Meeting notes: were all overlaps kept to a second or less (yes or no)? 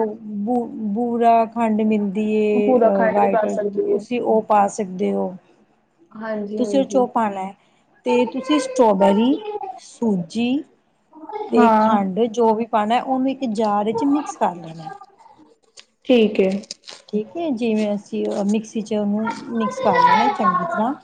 no